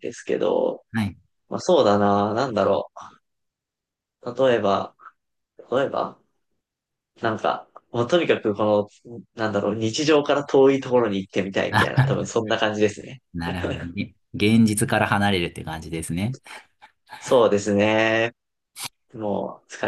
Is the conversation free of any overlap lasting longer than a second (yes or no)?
yes